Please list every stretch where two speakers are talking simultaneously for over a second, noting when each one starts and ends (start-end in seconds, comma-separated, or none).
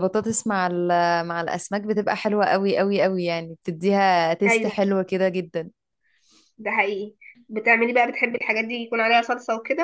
none